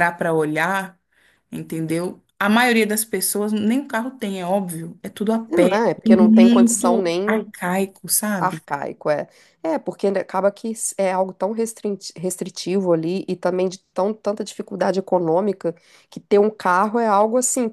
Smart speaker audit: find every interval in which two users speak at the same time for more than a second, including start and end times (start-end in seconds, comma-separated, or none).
5.5-7.5